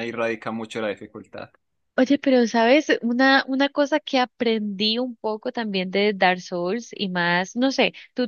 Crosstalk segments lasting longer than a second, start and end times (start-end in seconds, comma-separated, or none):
none